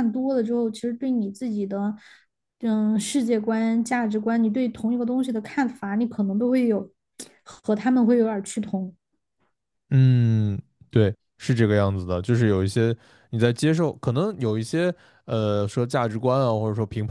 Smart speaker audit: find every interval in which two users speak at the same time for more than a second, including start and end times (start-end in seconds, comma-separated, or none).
none